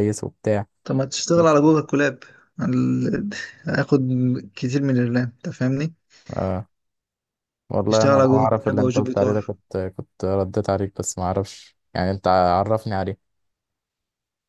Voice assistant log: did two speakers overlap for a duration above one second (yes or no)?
yes